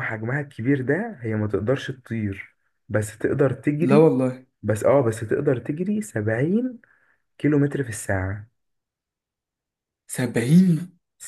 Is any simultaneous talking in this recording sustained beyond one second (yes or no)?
no